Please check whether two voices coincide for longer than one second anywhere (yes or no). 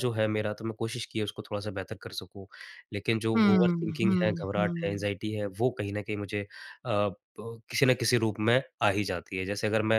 yes